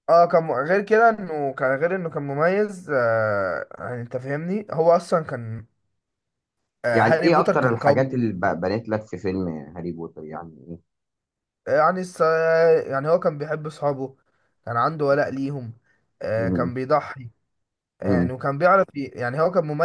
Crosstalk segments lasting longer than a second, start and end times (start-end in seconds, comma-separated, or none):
6.9-8.2